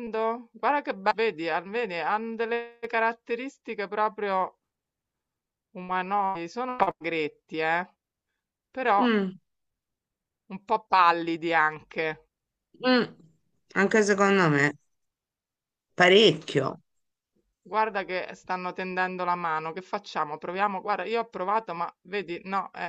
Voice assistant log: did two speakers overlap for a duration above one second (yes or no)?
no